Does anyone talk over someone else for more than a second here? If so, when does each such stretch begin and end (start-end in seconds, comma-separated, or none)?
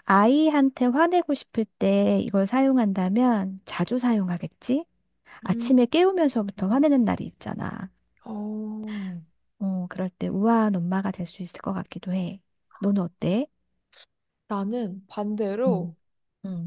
none